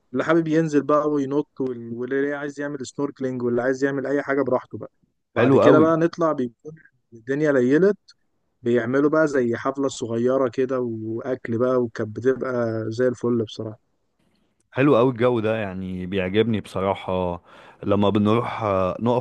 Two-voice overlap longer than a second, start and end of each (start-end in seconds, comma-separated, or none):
none